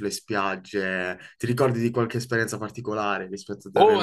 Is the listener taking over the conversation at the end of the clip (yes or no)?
yes